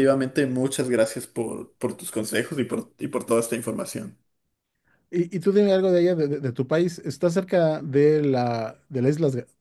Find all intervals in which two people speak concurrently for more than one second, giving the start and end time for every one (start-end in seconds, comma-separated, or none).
none